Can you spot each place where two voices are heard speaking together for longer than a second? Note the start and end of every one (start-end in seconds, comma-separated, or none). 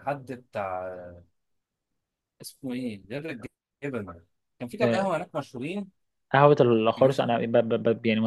none